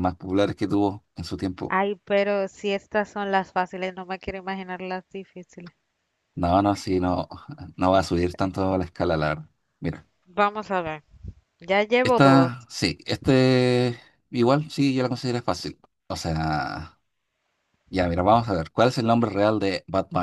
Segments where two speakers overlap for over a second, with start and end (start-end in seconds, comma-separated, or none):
none